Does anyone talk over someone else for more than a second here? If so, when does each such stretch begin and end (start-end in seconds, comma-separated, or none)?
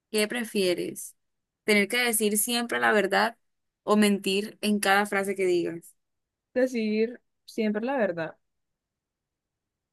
none